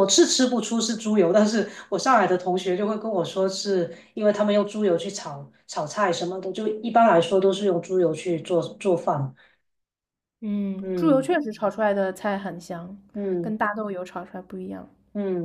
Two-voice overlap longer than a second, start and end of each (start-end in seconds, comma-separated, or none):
none